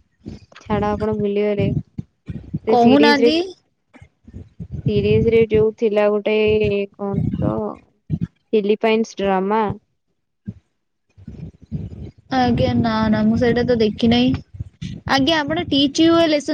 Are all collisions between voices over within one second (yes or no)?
yes